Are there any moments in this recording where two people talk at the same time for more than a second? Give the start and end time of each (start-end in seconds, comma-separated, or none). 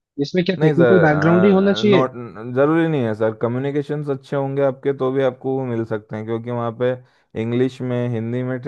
0.6-2.0